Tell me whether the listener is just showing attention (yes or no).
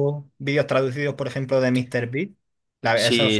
no